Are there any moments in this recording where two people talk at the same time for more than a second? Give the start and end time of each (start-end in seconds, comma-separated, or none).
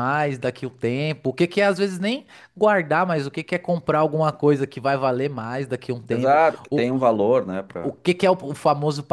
none